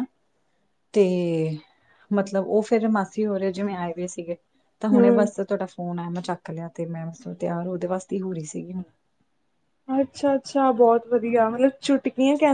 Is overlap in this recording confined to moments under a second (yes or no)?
yes